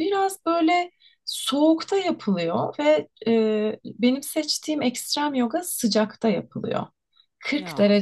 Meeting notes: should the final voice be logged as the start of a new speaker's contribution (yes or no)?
no